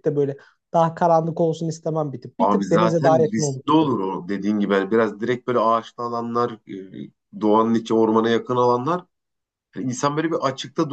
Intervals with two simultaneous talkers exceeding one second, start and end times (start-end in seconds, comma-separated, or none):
2.4-4.0